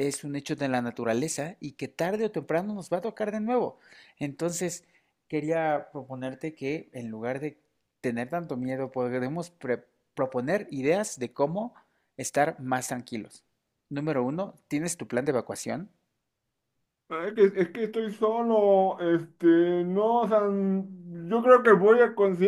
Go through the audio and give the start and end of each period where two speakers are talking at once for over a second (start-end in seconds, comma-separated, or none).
none